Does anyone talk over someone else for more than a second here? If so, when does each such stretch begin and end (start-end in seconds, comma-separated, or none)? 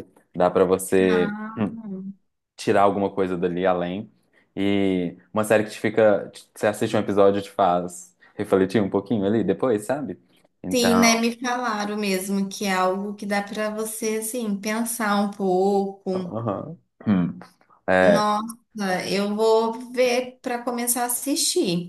none